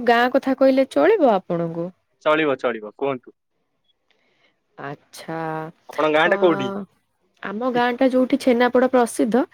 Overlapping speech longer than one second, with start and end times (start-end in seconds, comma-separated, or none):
none